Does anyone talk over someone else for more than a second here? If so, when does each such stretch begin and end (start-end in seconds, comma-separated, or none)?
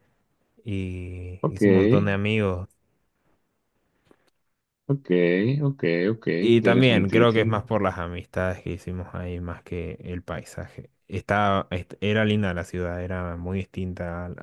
6.4-7.6